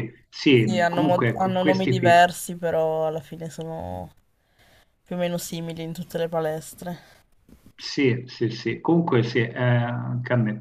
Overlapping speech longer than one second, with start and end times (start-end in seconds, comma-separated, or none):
0.5-2.2